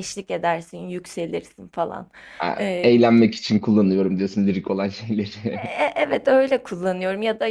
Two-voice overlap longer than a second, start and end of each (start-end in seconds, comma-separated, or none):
none